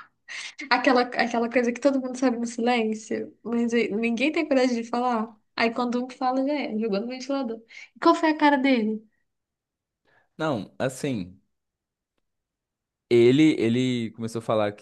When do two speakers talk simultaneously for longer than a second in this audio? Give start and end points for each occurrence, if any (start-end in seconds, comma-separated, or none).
none